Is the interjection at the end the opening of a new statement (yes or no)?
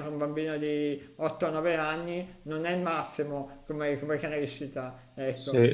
yes